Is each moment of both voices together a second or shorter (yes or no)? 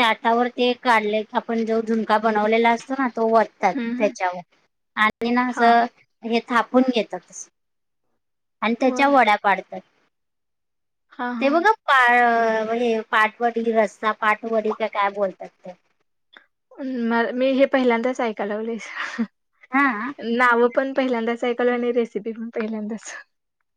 yes